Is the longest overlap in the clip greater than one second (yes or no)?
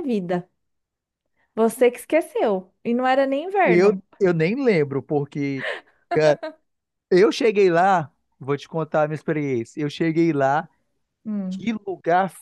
no